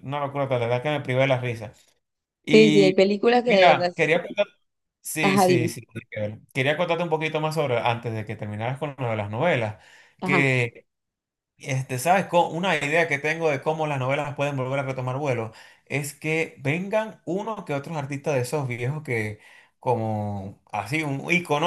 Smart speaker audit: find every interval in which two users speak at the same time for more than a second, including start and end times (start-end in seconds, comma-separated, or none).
2.5-3.9